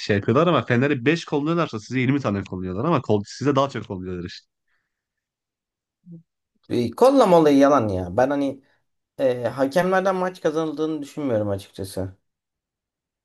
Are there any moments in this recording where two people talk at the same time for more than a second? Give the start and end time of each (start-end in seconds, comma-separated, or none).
none